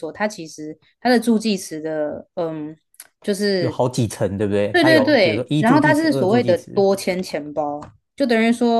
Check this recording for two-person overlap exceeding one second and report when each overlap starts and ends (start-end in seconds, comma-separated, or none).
4.7-6.8